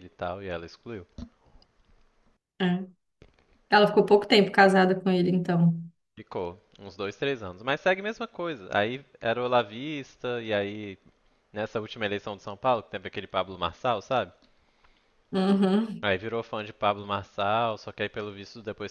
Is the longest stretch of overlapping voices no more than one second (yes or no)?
yes